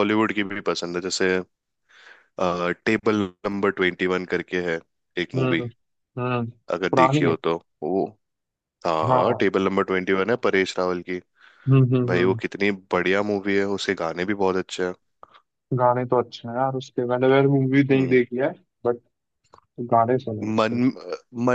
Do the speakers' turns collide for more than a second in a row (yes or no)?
no